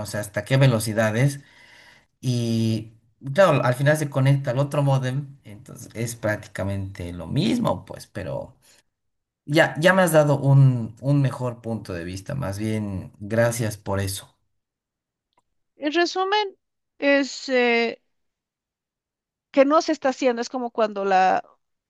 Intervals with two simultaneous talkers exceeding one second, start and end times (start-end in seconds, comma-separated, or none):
none